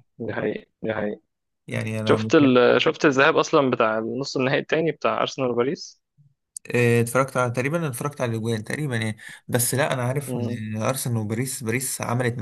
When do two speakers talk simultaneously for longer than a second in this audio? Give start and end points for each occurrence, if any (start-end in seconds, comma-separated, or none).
none